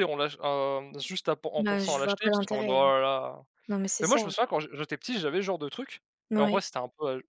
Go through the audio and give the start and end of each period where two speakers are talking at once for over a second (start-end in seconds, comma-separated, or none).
1.6-2.8